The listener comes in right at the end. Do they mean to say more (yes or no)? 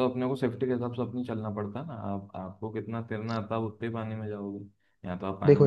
yes